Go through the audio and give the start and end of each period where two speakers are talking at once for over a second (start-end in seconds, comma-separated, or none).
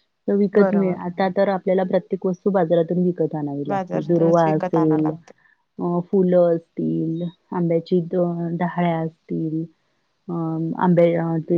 3.7-5.1